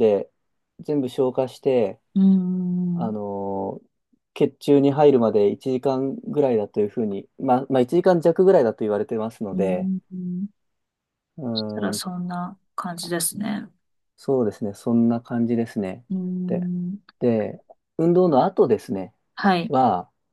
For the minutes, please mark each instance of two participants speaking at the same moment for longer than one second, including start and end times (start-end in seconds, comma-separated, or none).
none